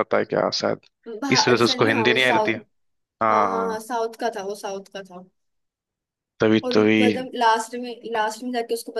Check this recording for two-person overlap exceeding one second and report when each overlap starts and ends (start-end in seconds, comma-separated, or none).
1.3-2.6